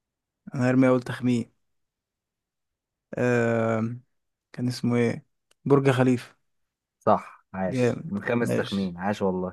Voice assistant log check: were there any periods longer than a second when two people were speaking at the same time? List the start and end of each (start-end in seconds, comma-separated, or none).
7.7-8.9